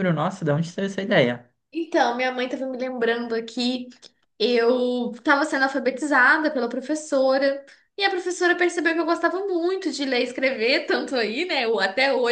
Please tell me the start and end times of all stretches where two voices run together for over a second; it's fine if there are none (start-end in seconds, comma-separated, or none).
none